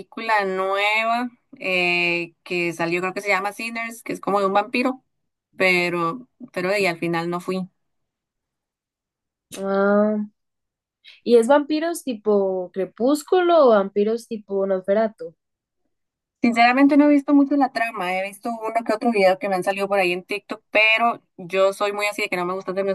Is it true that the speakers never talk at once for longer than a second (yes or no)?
yes